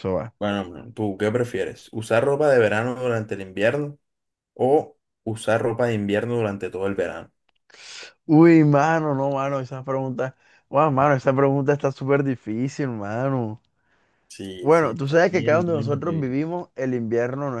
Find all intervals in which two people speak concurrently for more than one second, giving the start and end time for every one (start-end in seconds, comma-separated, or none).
14.6-16.4